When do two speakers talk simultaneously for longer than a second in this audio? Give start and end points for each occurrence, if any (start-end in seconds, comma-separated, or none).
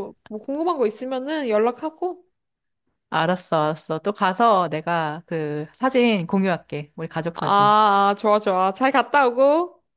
none